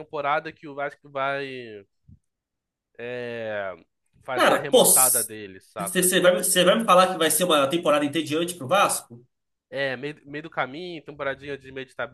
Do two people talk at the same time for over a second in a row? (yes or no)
yes